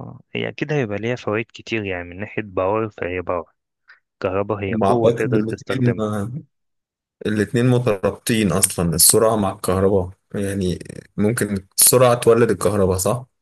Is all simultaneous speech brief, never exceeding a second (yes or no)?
no